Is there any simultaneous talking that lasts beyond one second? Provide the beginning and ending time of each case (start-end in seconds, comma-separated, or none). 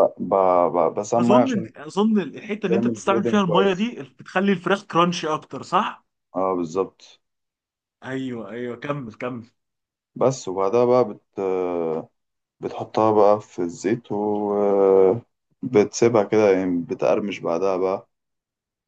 2.7-3.9